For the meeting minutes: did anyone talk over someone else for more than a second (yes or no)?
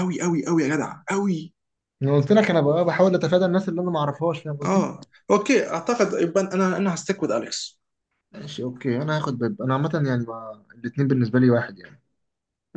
no